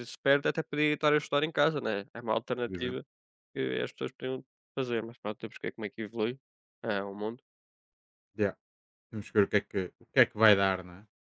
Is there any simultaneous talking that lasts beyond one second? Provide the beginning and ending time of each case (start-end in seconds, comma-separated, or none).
none